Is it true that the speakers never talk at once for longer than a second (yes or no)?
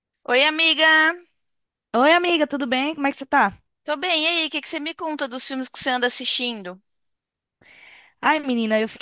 yes